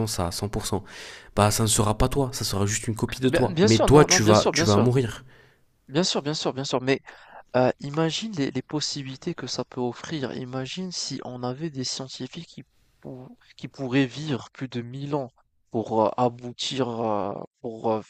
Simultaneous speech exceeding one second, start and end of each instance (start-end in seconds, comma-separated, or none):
3.2-4.9